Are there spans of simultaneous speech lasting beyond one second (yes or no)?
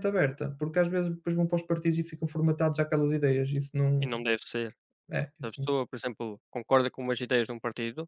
no